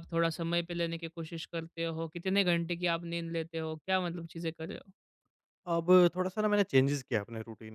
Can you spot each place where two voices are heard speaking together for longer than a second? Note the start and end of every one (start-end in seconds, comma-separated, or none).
none